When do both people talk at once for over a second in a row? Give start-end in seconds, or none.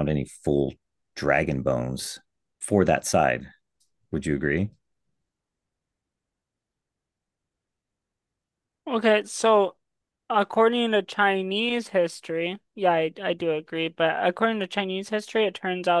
none